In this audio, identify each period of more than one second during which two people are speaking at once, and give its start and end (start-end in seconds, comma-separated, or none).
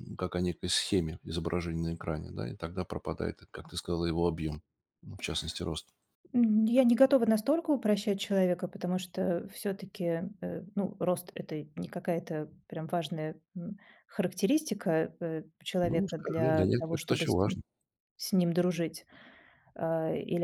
15.8-17.6